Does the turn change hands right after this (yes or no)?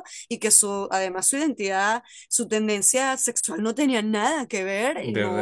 no